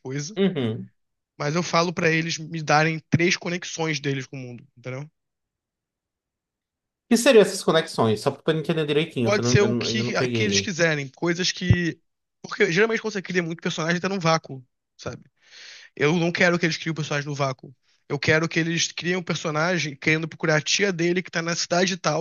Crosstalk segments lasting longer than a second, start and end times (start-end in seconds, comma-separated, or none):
9.2-10.7